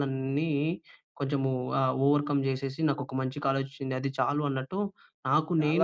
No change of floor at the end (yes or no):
no